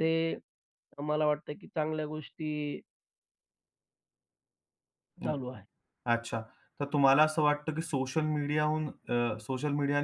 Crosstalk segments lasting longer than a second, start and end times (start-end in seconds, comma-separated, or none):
none